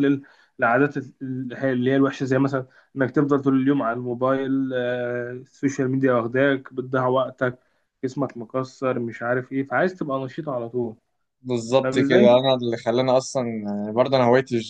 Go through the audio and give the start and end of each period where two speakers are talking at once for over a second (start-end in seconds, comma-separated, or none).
none